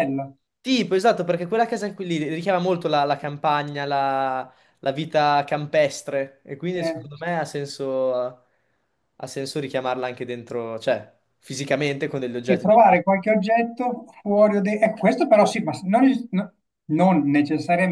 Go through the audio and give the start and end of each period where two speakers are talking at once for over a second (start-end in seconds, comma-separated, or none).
none